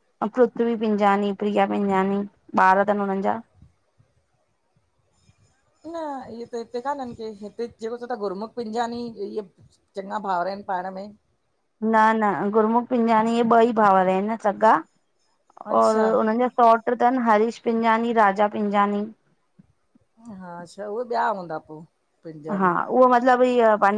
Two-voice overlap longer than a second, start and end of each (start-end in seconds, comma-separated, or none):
none